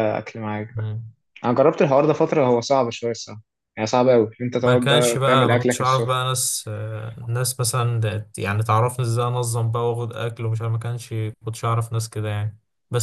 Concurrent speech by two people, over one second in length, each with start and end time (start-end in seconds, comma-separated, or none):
4.6-6.2